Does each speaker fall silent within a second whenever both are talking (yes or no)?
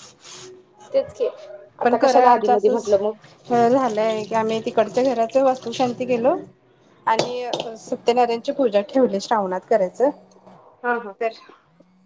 no